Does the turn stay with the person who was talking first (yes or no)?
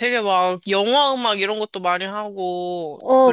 no